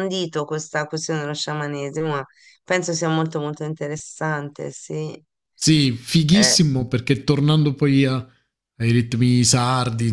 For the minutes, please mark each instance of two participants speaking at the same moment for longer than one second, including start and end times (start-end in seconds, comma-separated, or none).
none